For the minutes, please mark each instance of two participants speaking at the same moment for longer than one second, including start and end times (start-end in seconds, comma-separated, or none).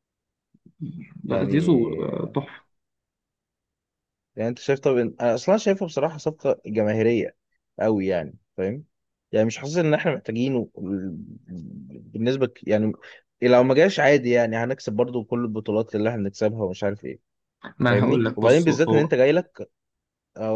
17.9-19.1